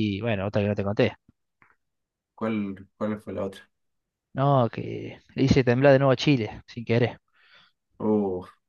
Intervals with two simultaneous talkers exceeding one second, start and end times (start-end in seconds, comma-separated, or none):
none